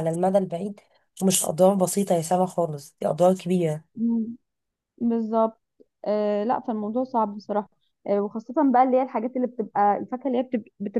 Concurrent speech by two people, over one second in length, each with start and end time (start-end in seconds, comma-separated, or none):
none